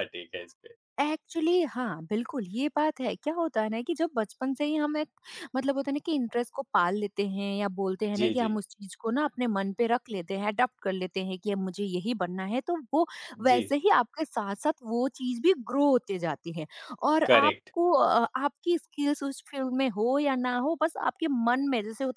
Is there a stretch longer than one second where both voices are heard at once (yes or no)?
no